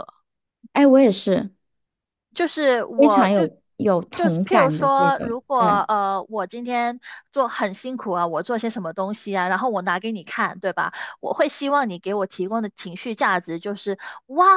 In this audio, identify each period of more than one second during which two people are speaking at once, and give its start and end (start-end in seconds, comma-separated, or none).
4.1-5.9